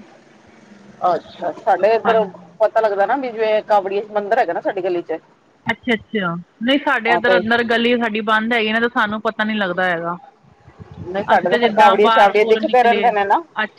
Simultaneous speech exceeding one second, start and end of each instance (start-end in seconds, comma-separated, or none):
11.3-13.1